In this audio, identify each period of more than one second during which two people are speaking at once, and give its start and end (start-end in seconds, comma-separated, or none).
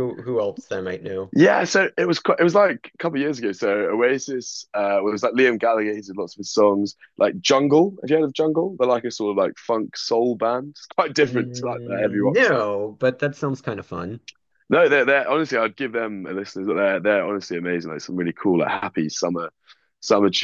11.2-12.7